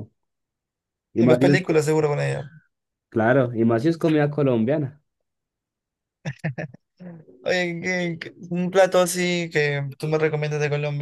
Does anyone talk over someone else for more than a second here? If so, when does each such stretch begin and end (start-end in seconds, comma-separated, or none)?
none